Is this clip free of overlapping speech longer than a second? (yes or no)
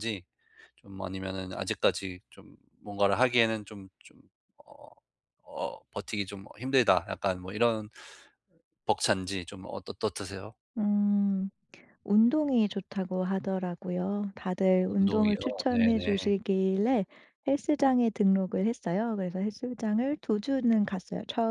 no